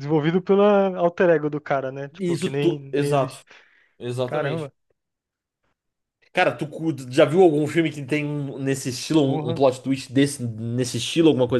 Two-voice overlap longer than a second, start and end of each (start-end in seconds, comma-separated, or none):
2.2-3.4